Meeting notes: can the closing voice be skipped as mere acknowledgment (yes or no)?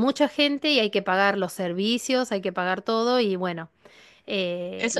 no